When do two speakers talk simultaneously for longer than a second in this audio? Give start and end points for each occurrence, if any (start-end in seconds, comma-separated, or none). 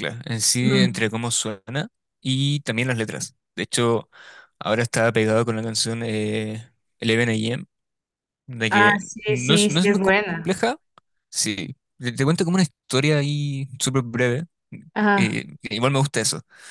8.7-10.5